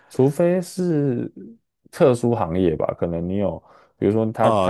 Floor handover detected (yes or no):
no